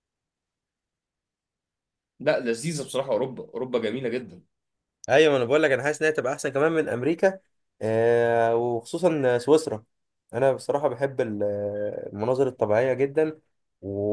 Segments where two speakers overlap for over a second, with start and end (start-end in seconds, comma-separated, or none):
none